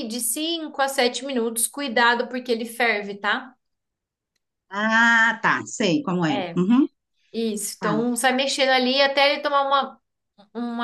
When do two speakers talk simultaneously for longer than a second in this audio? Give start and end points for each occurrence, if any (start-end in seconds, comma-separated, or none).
none